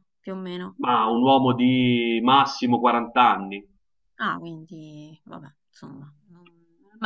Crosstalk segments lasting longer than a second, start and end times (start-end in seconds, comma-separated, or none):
none